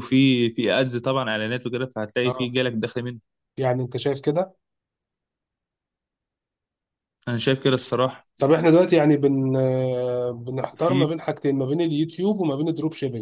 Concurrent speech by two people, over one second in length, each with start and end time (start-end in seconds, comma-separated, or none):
none